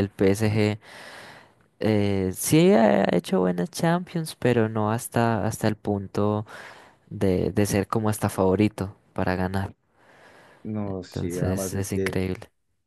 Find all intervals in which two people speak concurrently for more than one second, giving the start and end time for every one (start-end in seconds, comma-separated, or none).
10.8-12.2